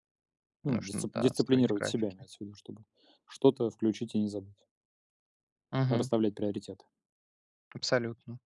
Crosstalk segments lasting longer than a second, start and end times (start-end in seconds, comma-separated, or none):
0.7-2.2